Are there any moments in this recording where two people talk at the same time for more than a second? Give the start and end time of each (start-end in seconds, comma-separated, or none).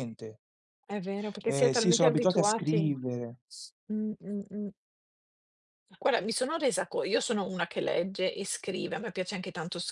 1.5-2.9